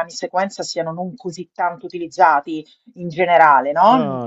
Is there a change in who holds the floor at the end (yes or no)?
yes